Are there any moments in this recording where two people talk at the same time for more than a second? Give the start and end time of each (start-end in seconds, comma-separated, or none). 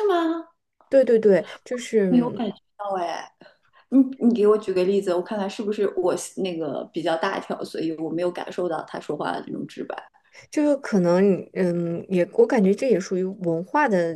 none